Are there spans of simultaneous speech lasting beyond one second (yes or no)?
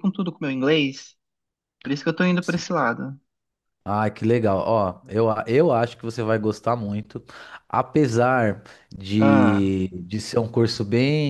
no